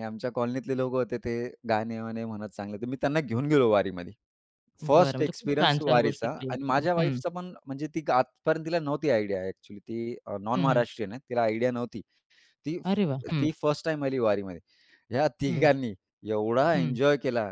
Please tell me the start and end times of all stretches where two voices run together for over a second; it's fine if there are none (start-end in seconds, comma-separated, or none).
4.9-7.2